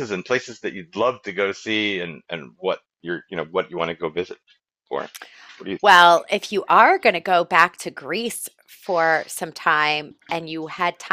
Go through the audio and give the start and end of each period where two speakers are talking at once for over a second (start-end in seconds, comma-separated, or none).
none